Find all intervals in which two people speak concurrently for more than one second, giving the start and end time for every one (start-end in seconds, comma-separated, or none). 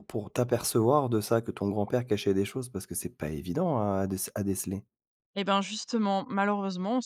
none